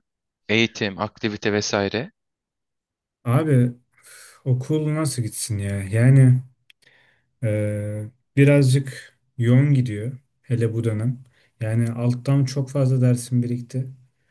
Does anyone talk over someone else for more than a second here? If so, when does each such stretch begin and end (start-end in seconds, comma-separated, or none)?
none